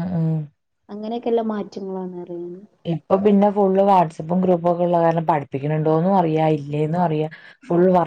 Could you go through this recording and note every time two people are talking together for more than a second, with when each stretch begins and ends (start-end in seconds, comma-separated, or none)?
none